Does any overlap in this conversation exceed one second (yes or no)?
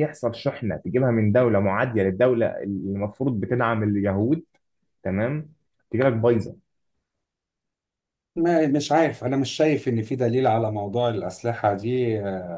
no